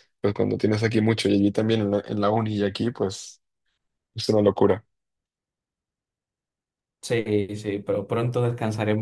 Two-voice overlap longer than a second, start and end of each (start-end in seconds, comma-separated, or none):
none